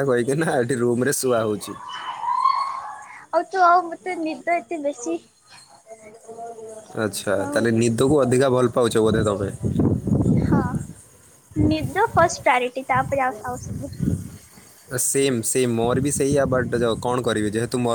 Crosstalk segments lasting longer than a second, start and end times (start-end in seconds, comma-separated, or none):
none